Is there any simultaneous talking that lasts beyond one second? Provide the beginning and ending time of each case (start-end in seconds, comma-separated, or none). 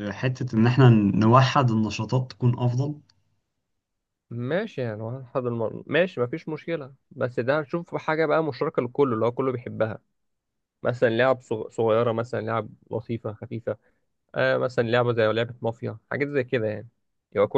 none